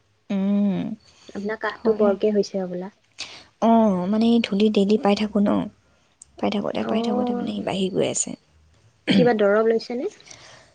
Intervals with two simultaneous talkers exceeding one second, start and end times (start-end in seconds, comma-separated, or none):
none